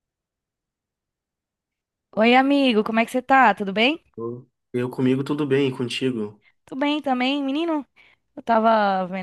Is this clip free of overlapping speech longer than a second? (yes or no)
yes